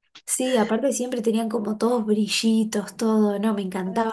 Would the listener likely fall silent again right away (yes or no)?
no